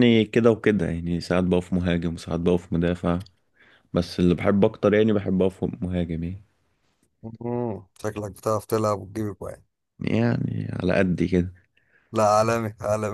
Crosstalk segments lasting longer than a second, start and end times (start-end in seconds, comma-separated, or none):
none